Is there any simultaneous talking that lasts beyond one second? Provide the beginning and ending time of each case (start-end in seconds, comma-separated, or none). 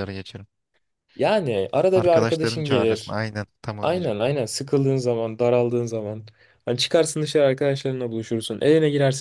1.9-3.2